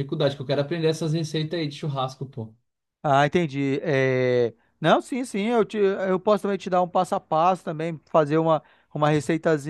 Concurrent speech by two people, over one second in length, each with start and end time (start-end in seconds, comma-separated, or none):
none